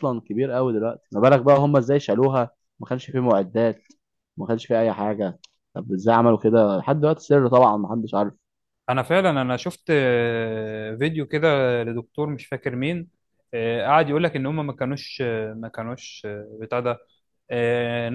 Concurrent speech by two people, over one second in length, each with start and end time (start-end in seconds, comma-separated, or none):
none